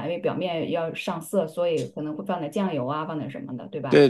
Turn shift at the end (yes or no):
yes